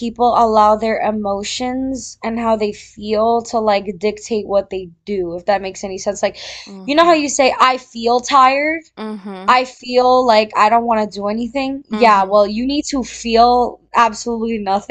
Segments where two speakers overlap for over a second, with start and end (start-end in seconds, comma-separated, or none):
none